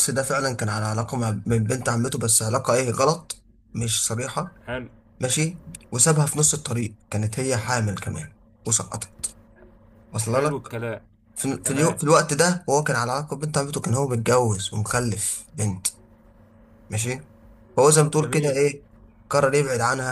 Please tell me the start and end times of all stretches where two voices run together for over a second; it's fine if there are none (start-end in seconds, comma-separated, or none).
none